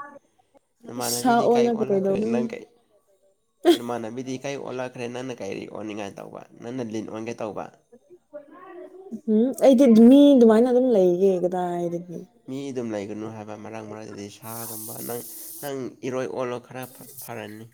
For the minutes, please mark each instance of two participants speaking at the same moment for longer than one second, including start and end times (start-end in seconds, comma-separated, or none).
1.0-2.5